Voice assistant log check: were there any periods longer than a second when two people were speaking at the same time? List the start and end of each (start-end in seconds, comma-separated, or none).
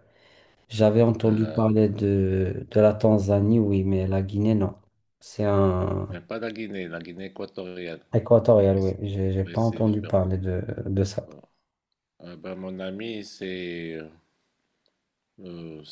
8.7-10.2